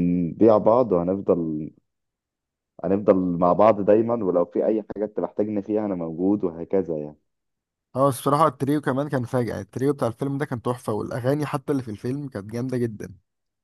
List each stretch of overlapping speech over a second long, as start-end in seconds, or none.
none